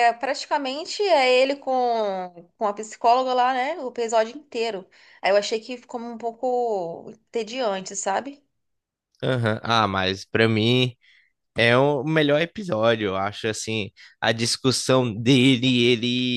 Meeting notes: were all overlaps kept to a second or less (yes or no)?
yes